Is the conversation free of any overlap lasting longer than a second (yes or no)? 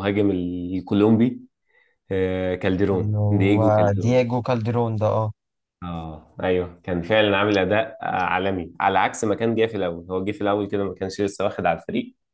no